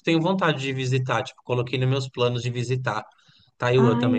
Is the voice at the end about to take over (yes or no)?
yes